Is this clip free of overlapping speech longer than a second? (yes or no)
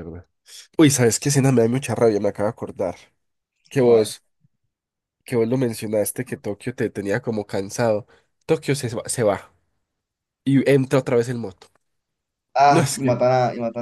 yes